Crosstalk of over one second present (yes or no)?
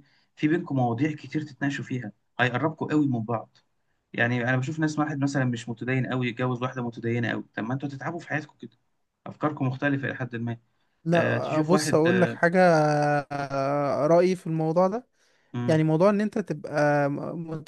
yes